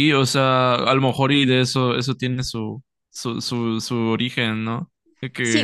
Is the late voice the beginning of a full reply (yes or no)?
yes